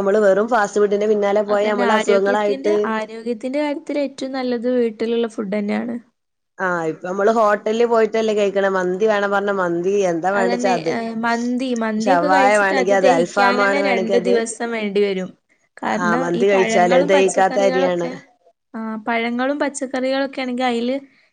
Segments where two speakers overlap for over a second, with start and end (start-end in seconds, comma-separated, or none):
12.1-14.2, 16.0-18.1